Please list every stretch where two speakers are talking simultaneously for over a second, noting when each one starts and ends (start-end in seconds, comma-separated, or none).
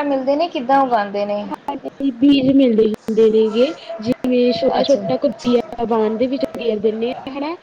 none